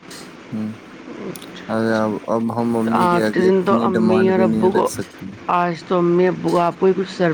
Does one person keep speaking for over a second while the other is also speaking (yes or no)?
yes